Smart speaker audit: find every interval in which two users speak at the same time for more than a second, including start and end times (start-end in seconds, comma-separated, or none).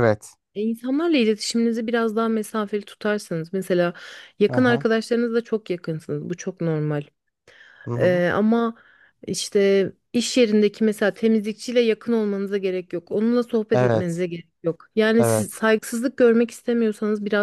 none